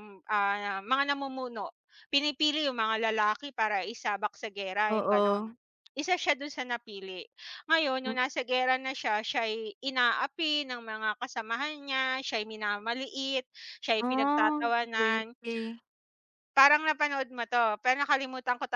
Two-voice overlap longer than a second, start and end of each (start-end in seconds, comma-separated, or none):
14.1-15.3